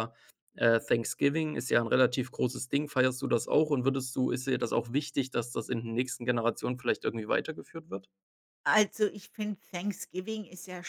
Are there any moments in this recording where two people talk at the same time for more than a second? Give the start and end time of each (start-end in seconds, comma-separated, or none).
none